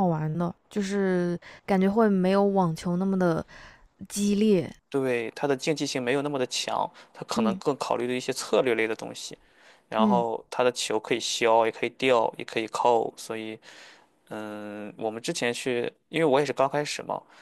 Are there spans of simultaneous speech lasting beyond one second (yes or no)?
no